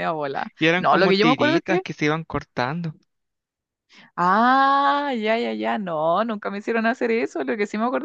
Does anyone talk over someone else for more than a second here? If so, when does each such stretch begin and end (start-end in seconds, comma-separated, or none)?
0.6-1.8